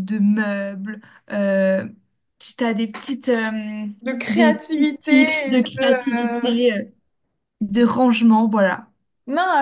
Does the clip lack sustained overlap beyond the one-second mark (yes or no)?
no